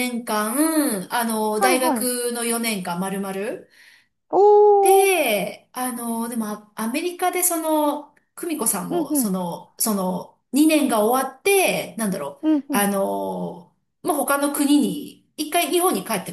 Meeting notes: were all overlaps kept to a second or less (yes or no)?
yes